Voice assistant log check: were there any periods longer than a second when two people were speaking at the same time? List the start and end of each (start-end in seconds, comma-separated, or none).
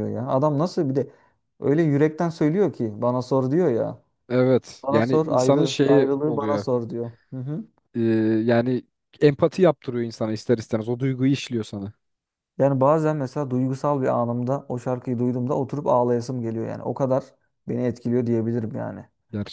4.8-6.7